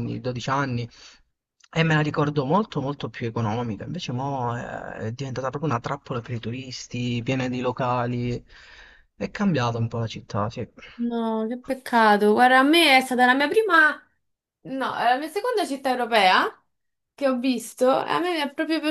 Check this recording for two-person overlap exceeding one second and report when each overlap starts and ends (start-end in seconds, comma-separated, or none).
none